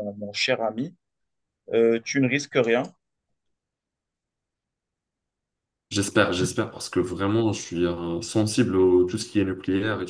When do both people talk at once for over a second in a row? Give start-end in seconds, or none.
none